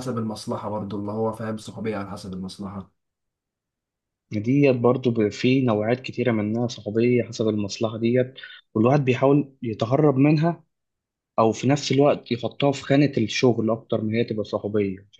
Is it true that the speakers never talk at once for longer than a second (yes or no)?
yes